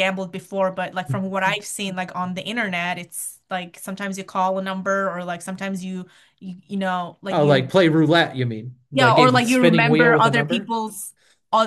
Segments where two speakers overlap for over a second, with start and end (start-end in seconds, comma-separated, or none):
8.9-10.8